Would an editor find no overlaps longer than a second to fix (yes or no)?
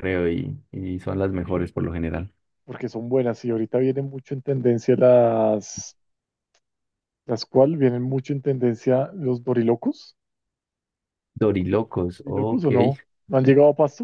yes